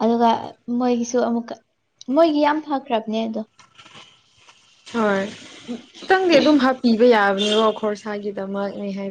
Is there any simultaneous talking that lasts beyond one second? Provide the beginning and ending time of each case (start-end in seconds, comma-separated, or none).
none